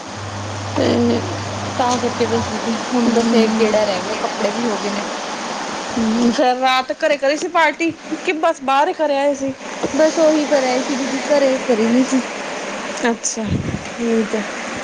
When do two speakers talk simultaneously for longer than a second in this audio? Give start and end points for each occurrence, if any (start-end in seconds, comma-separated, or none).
none